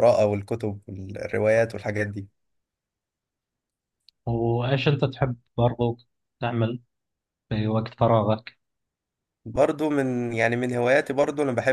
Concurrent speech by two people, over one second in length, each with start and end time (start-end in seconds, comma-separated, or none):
none